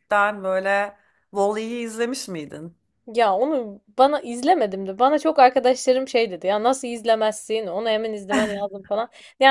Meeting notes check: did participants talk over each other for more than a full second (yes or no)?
no